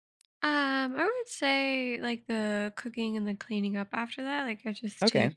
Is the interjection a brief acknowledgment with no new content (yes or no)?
yes